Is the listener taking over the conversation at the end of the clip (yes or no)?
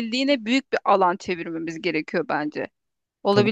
no